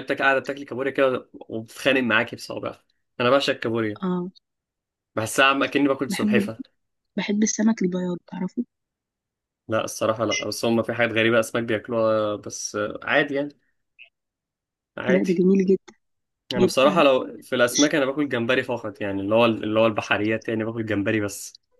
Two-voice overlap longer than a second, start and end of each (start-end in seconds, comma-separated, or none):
none